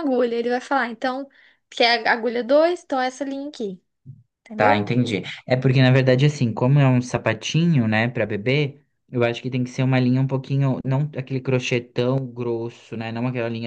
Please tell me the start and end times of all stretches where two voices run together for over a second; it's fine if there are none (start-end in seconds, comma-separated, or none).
none